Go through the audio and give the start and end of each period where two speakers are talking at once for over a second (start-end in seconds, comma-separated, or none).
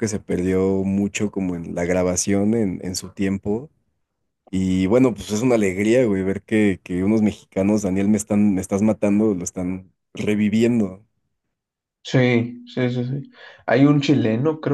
none